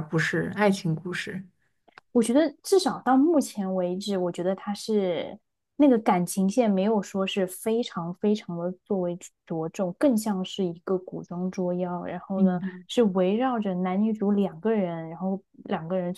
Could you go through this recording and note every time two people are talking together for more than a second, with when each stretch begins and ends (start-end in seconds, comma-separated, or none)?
none